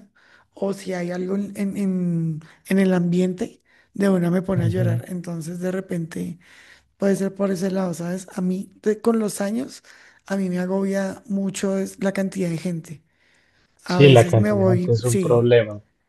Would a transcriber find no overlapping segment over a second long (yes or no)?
no